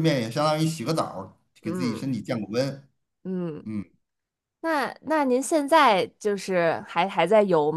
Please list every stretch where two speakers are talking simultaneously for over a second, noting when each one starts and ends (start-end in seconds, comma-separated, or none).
none